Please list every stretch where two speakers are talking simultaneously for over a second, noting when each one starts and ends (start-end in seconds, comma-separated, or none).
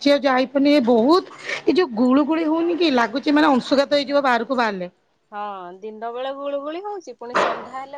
none